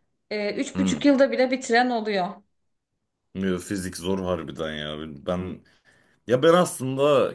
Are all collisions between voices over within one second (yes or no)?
yes